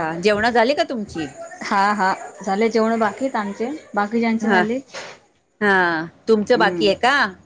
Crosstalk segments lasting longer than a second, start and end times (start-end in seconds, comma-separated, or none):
none